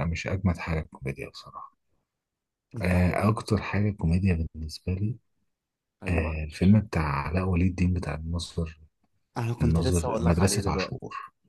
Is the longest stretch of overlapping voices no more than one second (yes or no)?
no